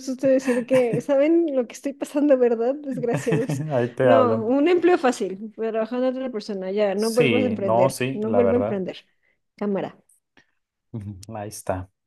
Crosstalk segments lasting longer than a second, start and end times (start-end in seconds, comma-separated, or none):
7.0-8.8